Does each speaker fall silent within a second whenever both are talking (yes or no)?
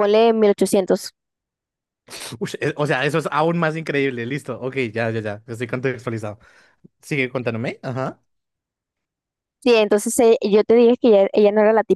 yes